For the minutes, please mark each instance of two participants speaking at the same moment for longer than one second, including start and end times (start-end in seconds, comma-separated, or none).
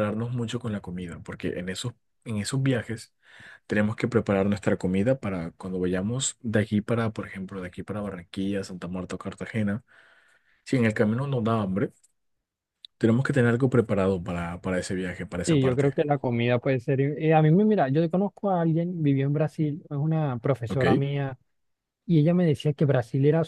none